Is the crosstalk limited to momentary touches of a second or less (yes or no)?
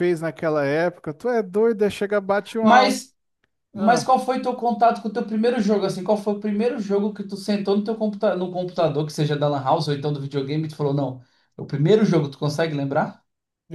yes